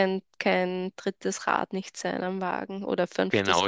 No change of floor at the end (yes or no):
no